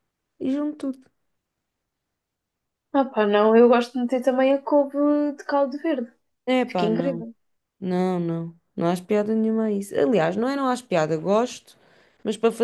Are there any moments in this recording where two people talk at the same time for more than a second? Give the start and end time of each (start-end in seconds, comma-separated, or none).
none